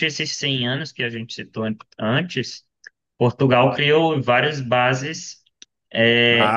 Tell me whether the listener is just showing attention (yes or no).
yes